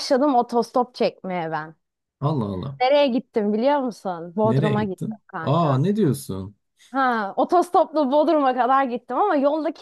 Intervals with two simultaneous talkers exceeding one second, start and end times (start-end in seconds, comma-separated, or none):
4.4-5.8